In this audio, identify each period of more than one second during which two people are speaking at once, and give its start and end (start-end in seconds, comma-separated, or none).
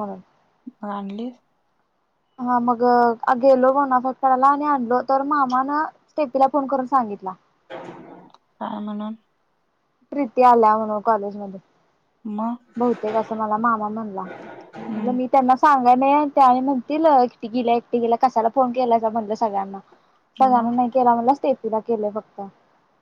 none